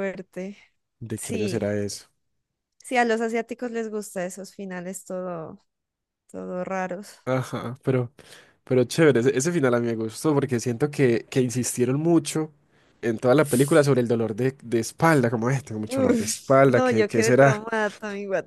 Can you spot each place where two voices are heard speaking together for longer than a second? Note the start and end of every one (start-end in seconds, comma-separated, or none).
15.9-17.7